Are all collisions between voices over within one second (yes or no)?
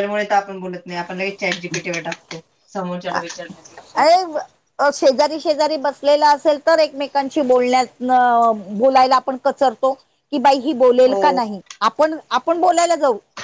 yes